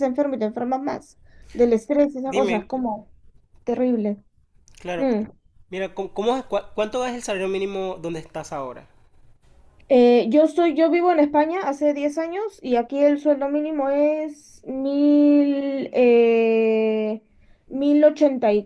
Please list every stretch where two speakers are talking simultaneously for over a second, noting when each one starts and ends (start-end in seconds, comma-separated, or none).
none